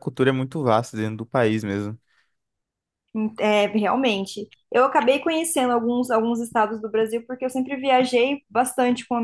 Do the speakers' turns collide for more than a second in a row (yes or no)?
no